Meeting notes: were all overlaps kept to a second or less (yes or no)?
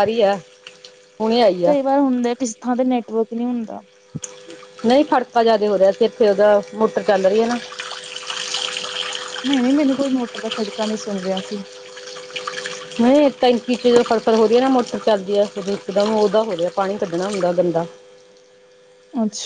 yes